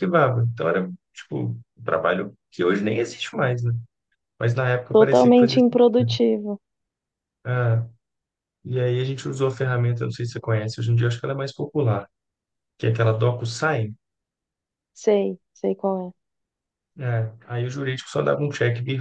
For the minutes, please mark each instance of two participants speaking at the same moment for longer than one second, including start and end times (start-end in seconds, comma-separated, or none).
4.9-6.2